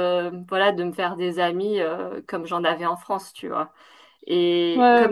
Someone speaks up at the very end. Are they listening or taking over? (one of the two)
listening